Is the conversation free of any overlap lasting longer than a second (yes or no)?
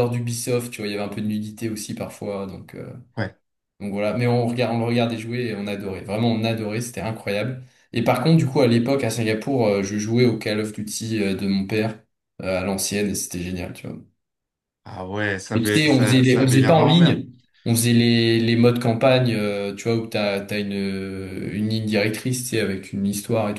no